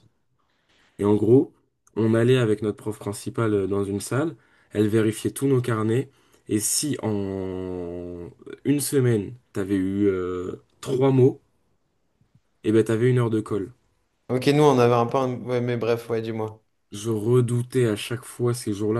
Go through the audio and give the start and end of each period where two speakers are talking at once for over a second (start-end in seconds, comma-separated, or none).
none